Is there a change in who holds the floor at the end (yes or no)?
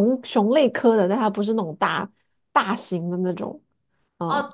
yes